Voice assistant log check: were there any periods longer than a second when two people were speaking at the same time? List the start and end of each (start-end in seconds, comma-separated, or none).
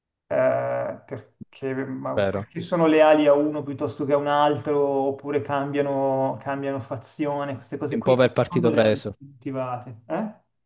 8.0-9.2